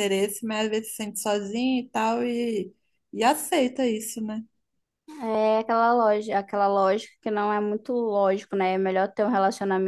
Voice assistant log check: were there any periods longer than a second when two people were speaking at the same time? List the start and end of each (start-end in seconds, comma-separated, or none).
none